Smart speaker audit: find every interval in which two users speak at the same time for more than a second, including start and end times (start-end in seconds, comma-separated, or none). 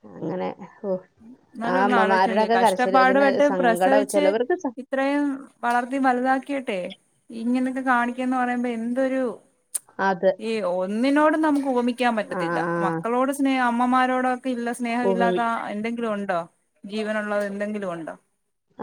1.7-4.2